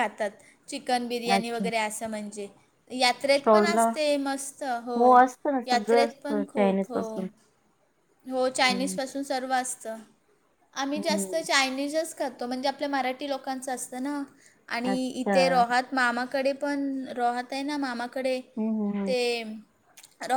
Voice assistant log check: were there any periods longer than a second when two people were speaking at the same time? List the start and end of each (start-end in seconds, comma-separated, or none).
5.7-7.0